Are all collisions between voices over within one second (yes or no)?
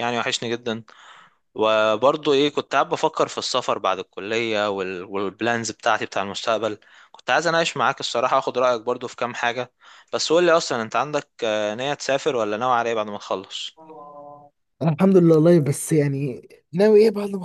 yes